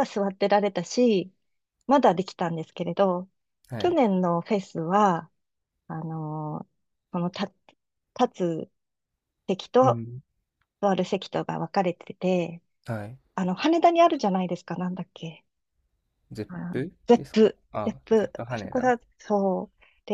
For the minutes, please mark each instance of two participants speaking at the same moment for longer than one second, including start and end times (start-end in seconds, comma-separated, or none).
16.5-18.9